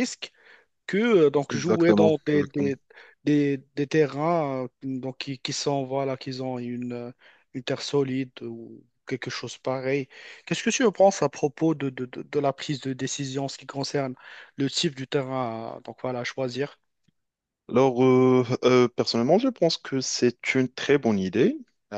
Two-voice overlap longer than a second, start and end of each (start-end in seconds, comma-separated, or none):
1.5-2.7